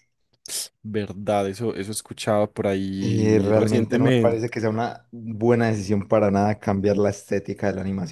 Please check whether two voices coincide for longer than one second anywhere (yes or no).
yes